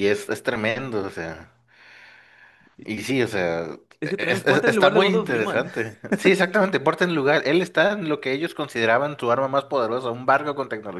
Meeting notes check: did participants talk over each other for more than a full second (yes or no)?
yes